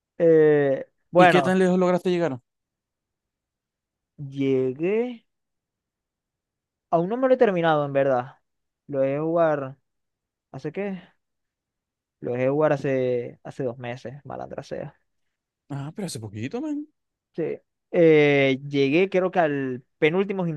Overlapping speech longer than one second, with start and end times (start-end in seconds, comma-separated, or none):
none